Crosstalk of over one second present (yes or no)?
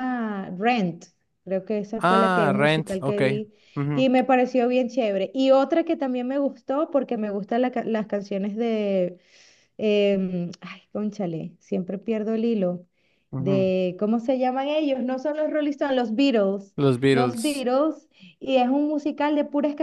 yes